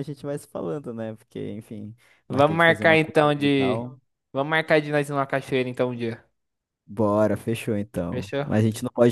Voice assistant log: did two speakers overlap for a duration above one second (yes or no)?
yes